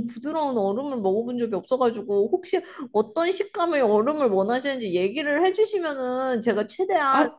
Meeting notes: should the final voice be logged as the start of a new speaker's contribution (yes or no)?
yes